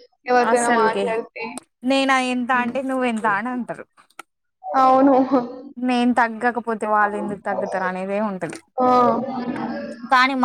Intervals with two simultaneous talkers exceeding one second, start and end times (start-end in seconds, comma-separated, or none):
none